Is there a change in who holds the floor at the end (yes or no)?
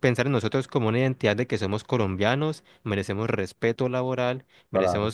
no